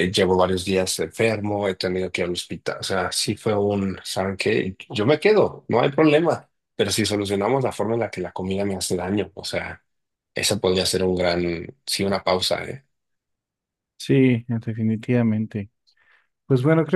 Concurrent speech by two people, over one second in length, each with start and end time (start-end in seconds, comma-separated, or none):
none